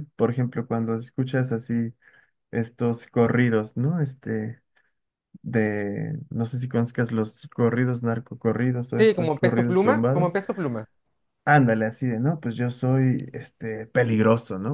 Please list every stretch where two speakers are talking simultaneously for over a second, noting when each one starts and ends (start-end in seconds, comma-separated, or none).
9.0-10.4